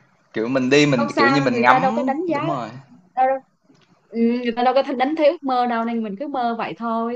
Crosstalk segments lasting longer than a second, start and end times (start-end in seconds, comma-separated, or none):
0.9-2.7